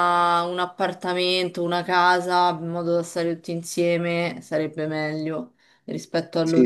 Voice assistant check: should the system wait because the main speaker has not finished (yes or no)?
no